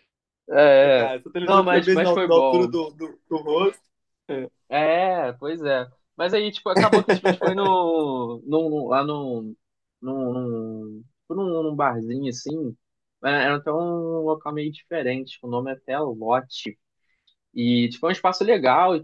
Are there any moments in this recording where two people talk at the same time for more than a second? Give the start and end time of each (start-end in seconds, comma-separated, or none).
0.9-2.7